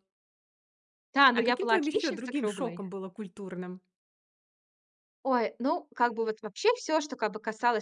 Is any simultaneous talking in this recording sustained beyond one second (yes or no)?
yes